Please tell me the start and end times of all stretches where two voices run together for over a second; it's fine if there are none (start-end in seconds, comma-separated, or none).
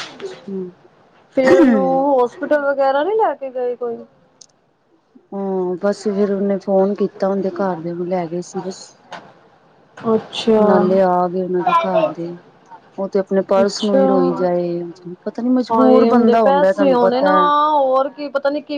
none